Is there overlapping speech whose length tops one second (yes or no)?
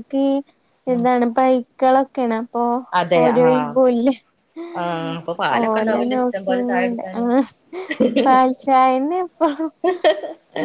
yes